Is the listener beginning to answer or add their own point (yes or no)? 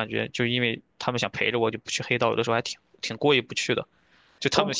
no